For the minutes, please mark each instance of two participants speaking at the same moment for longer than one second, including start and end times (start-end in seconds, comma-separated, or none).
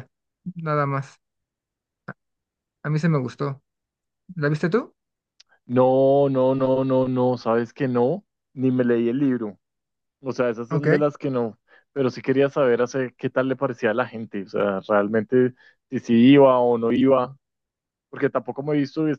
none